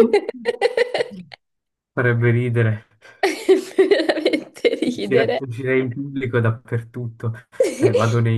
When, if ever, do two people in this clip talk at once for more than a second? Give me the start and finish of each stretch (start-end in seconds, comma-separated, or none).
none